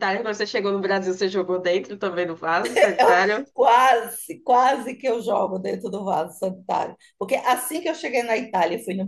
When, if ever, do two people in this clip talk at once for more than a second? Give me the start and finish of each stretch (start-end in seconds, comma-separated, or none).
none